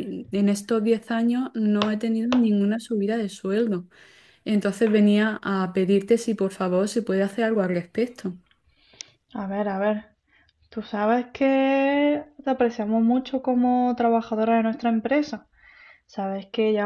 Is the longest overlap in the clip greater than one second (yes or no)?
no